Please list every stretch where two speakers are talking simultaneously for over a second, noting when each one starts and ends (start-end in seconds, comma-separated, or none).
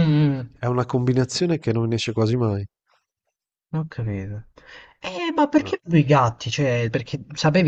none